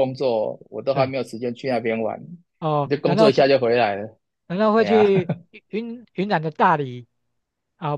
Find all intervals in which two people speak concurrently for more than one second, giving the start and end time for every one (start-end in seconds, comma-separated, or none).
none